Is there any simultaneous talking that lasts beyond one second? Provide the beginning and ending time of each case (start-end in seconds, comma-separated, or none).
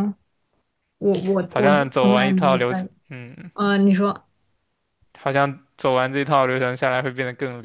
1.4-2.9